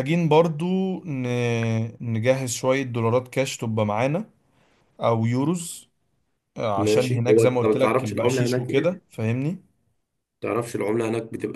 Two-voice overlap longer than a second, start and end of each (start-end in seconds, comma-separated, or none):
6.8-9.0